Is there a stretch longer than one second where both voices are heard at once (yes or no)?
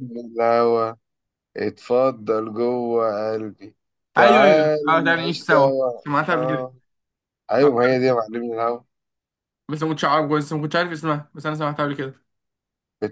yes